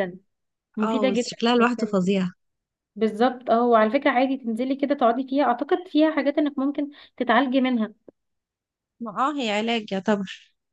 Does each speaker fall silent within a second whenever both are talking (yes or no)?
no